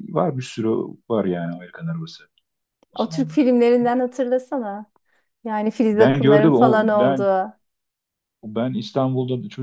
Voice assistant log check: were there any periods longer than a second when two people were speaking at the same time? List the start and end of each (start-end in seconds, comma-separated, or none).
5.9-7.3